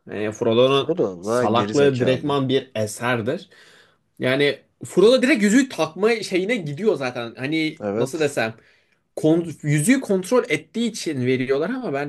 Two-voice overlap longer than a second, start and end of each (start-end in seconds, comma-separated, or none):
0.7-2.4